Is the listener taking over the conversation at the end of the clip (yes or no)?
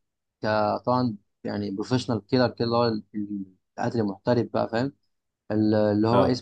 no